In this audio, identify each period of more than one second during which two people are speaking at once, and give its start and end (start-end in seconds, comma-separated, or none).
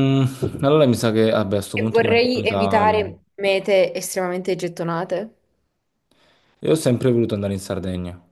1.7-3.0